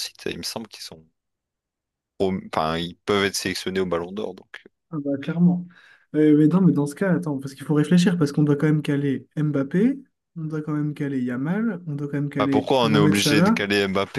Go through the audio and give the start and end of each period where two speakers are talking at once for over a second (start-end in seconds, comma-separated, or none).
12.4-13.6